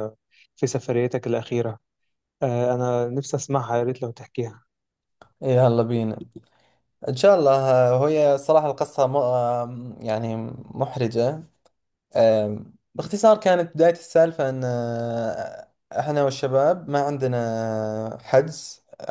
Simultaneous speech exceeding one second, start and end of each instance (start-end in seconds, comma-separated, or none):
none